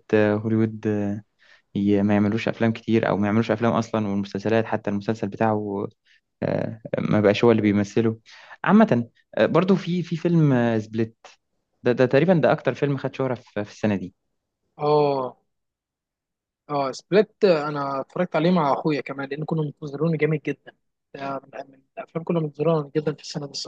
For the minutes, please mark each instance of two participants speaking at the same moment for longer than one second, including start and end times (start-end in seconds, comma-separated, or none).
none